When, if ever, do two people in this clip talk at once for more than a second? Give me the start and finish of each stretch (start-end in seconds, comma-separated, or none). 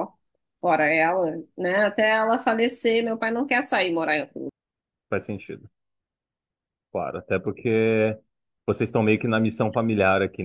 none